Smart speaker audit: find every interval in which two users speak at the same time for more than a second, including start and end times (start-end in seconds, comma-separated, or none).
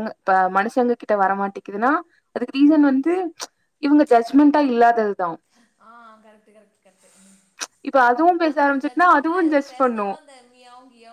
8.5-10.1